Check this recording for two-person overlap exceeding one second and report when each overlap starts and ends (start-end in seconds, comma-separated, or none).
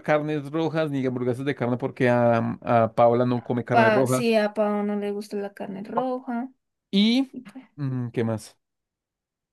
none